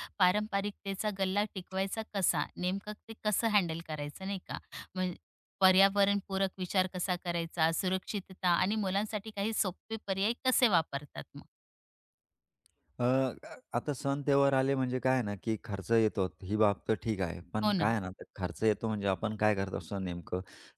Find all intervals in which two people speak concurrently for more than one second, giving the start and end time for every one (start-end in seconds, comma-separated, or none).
none